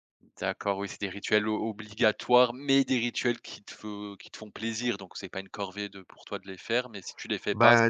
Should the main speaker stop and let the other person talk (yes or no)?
yes